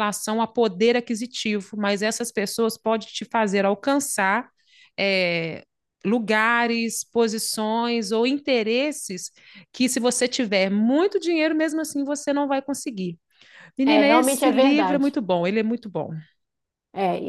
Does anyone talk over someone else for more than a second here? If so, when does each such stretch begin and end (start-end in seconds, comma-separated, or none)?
13.8-15.2